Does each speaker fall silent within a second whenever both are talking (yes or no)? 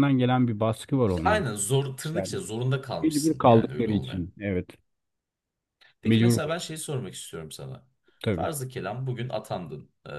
no